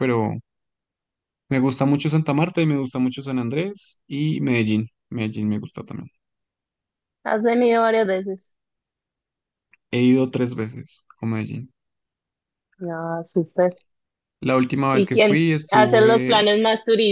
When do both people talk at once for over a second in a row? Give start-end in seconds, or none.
14.9-16.4